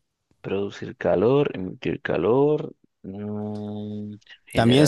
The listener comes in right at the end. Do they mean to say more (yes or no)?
yes